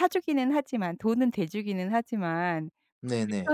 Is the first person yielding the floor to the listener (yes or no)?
no